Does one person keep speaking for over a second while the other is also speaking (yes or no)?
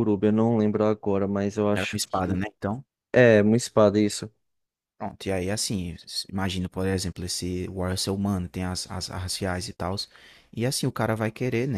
no